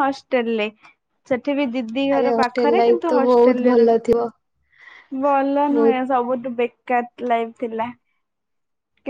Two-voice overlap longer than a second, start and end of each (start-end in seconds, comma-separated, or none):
2.1-4.3